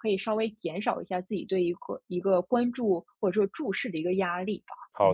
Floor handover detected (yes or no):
yes